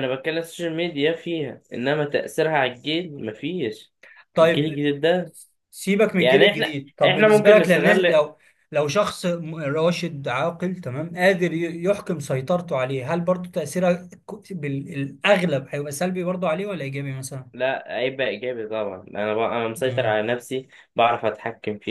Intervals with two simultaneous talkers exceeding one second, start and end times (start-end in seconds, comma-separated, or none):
6.2-8.2